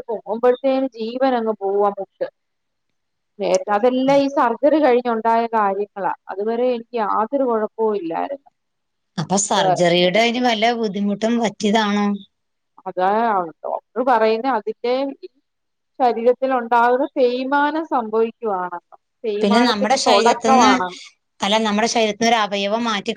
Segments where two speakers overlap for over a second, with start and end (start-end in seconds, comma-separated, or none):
19.4-20.7